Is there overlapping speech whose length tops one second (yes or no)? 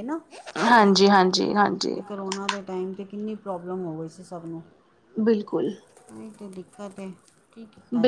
no